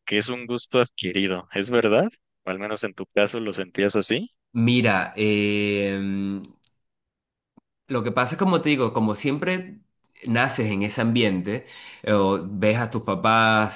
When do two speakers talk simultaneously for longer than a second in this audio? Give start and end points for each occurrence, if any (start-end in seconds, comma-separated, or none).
none